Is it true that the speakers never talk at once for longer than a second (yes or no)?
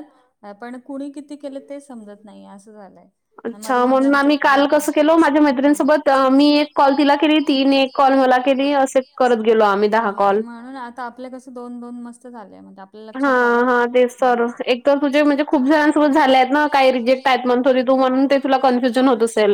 no